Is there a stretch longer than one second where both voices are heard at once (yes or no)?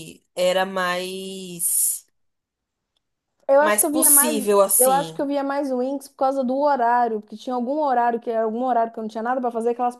yes